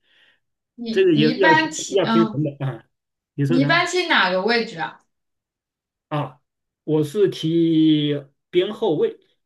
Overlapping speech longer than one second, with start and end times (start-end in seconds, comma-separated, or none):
0.9-2.4